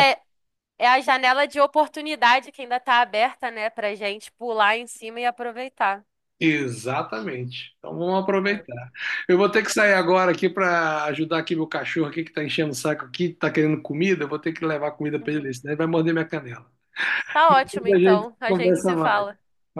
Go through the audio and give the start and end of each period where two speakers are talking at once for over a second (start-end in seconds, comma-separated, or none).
17.5-19.3